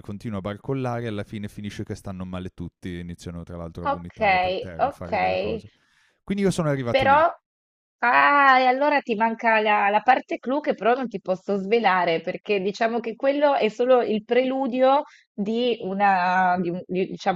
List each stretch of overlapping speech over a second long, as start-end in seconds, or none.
3.9-5.6